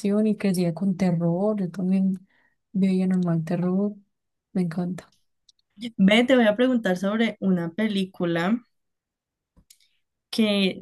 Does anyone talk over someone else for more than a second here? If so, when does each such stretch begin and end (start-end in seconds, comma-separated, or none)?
none